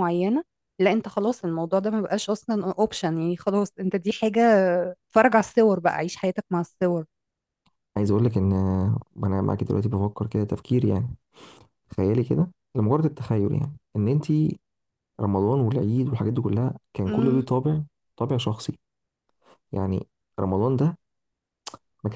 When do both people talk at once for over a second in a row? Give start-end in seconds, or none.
none